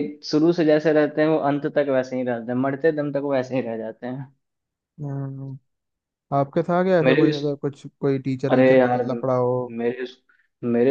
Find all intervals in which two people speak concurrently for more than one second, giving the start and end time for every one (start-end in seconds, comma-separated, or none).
none